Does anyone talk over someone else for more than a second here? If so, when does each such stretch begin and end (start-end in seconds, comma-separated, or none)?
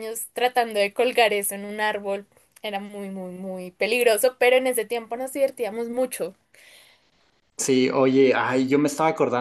none